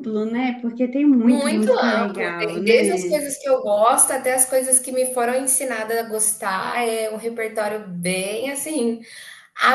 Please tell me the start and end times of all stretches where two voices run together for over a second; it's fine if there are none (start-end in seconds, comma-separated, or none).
1.2-3.2